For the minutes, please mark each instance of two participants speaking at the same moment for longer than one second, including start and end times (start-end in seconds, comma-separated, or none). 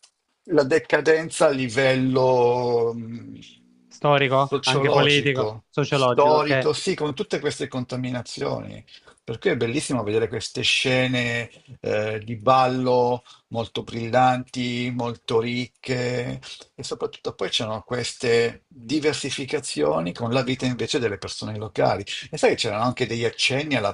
4.2-6.7